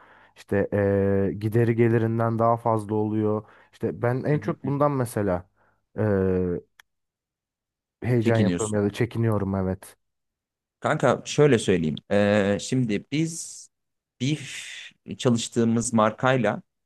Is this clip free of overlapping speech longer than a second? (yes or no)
yes